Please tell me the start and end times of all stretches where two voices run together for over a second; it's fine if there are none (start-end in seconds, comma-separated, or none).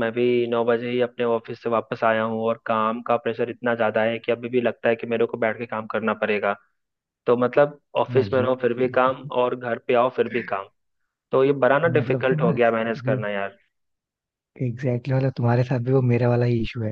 11.9-13.2